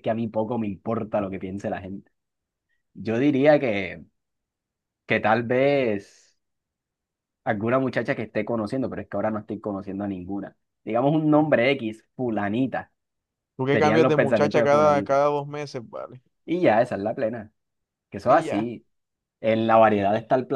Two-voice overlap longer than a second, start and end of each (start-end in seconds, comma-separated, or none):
13.7-15.2